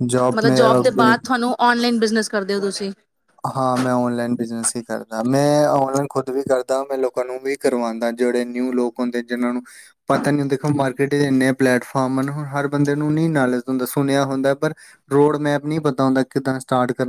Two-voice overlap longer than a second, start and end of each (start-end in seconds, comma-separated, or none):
none